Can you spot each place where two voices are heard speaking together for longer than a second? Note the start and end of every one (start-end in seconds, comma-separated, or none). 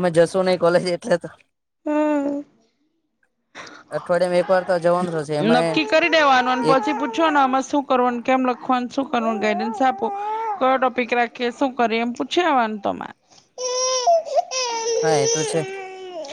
none